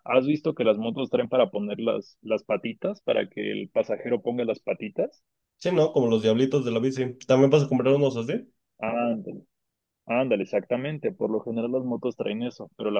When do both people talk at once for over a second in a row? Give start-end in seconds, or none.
none